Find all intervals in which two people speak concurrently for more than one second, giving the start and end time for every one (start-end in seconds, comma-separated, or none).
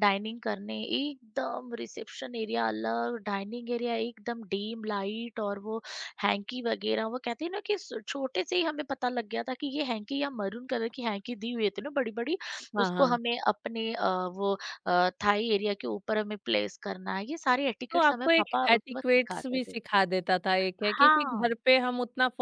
17.9-19.8